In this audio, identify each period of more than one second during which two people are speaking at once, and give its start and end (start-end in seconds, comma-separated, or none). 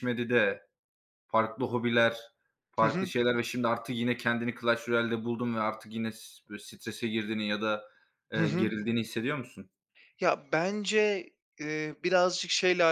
none